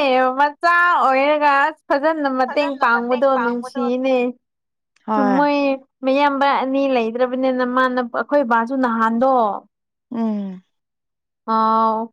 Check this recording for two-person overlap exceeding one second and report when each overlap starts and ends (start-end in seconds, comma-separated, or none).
2.5-4.0